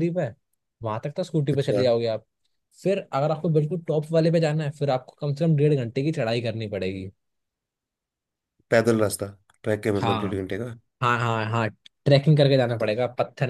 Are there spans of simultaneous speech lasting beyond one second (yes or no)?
no